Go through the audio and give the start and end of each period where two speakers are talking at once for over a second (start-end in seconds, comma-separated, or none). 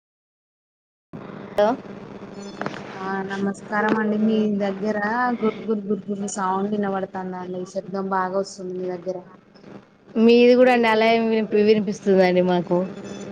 none